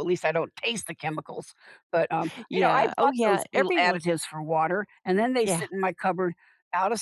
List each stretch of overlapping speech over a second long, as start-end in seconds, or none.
2.5-4.0